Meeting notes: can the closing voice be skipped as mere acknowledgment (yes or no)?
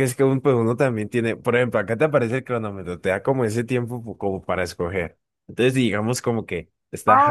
no